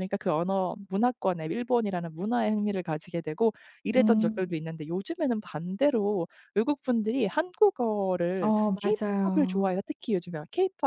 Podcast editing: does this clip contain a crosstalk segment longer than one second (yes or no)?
yes